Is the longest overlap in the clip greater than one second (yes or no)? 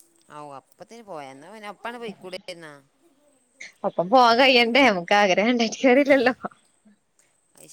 no